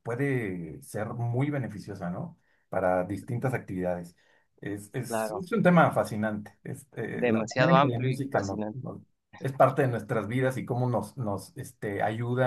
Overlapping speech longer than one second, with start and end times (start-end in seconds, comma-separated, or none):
7.1-8.8